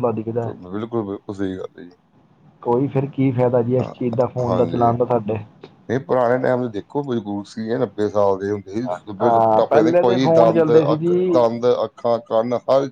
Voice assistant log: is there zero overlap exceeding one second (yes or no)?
no